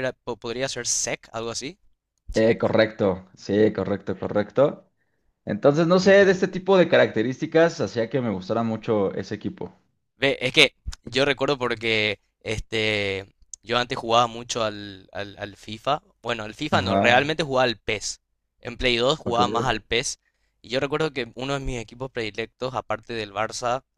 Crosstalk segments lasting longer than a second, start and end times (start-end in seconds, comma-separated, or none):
none